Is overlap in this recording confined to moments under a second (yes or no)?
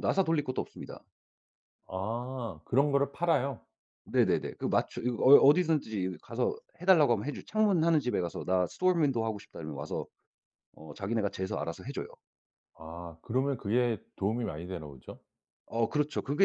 yes